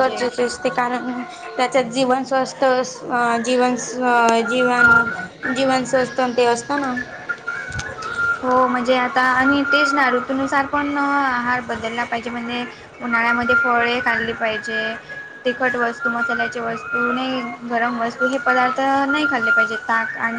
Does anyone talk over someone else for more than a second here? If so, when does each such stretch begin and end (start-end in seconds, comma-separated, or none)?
none